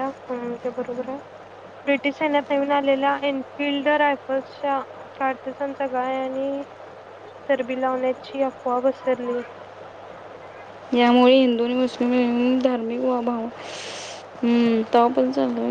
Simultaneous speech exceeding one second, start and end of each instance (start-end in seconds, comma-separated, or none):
none